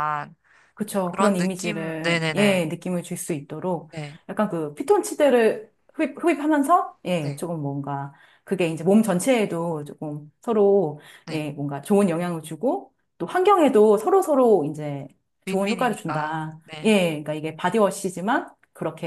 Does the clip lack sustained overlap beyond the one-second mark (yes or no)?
no